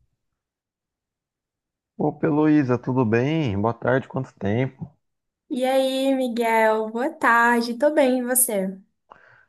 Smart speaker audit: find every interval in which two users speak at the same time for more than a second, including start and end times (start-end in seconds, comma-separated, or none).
none